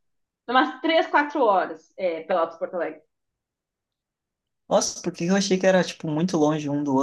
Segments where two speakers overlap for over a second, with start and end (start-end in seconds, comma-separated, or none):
none